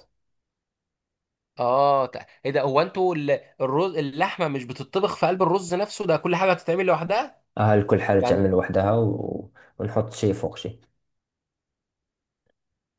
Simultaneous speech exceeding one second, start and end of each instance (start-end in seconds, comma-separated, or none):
none